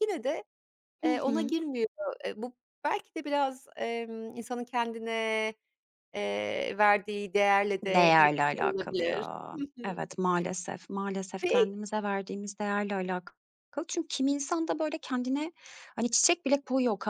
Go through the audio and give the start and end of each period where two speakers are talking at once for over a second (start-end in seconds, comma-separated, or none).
7.9-10.1